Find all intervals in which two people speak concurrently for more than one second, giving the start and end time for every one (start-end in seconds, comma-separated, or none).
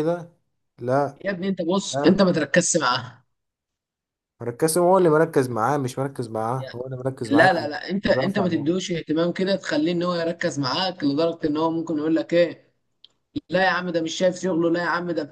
7.3-8.8